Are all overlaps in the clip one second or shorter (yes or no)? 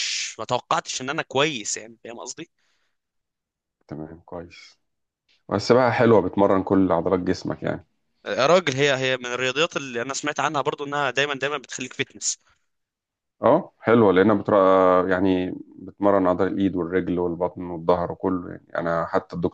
yes